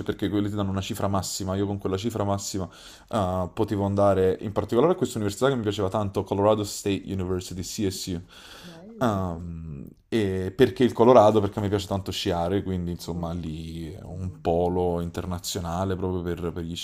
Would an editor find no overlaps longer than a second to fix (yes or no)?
yes